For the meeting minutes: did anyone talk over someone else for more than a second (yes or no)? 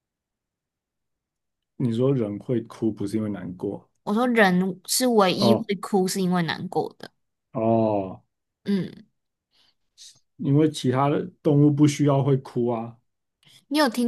no